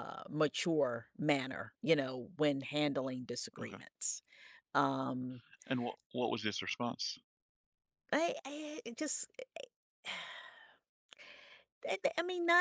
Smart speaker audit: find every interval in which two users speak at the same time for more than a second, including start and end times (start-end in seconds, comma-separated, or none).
none